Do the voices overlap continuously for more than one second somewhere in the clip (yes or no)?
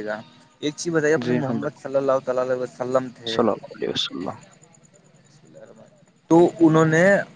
no